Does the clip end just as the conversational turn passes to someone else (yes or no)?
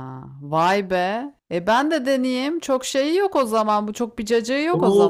yes